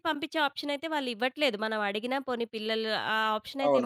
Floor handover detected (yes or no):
yes